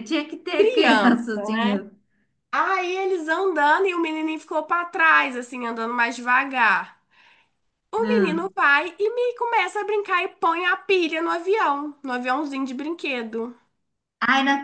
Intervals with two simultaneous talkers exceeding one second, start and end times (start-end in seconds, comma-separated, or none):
0.6-1.8